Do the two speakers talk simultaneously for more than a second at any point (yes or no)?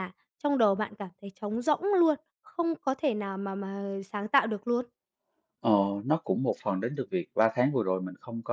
no